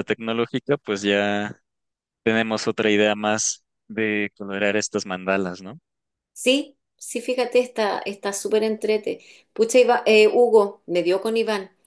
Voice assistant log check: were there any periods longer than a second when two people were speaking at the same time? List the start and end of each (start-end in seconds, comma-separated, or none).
none